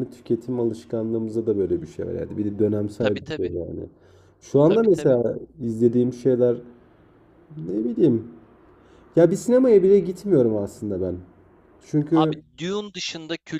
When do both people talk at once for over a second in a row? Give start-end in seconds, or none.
none